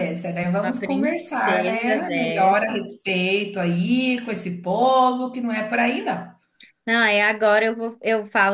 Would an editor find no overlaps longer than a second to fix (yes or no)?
no